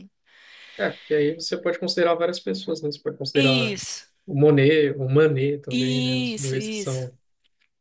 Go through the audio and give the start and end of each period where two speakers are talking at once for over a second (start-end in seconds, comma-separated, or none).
5.7-7.1